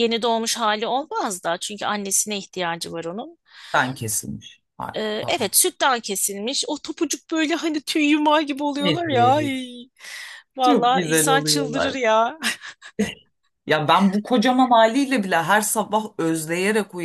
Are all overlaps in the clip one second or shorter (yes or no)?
no